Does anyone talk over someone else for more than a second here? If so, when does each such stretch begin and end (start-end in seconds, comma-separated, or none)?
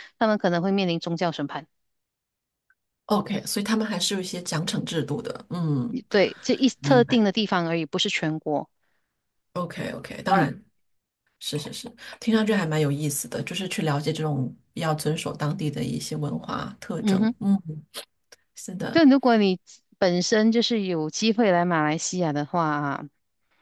none